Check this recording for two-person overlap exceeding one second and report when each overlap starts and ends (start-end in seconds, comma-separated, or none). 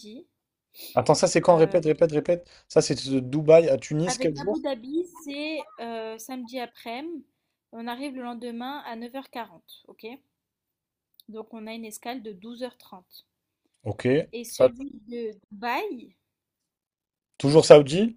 none